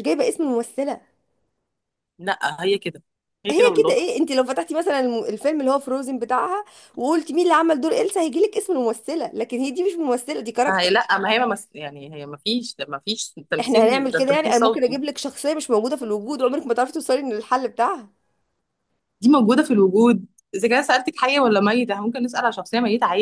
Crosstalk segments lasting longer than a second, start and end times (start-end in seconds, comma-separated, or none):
13.6-15.0